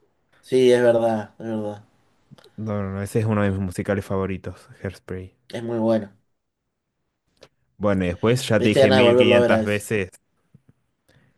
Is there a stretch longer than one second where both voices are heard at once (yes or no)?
yes